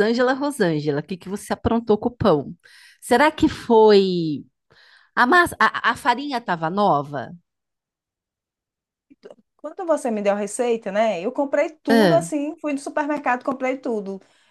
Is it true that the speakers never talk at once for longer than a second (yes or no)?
yes